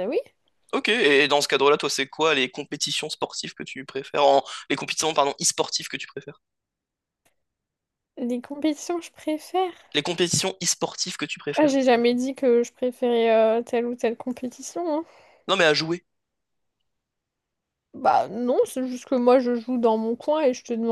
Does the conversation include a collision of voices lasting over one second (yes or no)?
no